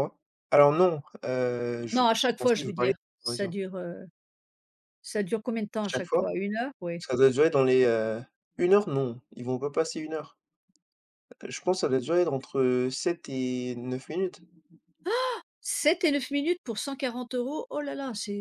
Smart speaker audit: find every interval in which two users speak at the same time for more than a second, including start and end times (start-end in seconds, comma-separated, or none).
1.9-3.5